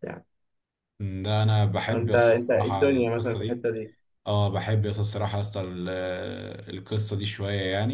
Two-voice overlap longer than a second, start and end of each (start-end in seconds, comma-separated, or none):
1.9-3.7